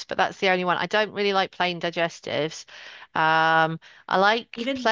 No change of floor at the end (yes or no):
yes